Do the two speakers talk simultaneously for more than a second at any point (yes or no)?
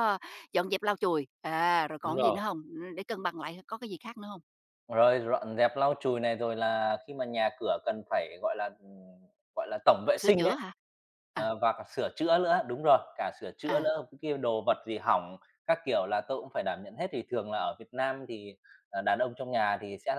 no